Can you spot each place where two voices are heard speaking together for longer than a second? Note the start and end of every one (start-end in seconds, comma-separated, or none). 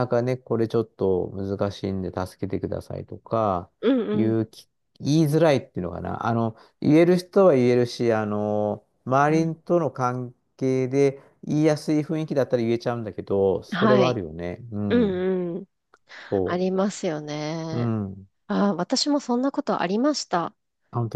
none